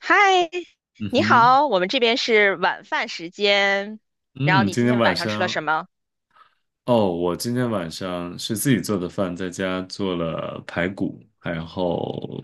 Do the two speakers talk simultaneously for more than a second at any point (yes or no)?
yes